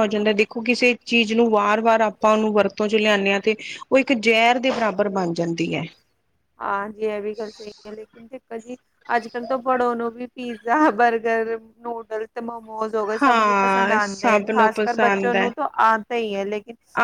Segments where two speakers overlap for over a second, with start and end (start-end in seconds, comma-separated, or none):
13.2-15.5